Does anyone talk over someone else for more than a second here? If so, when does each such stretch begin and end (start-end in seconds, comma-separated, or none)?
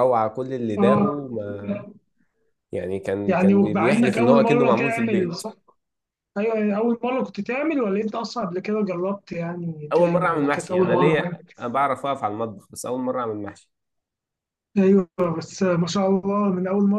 3.3-5.4, 9.9-11.4